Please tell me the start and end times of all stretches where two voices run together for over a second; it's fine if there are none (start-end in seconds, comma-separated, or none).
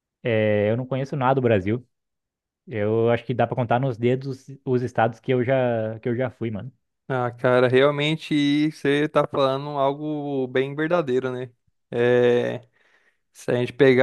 none